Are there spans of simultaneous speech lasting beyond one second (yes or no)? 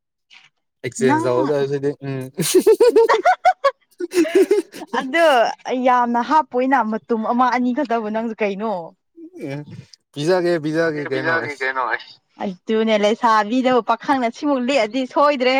no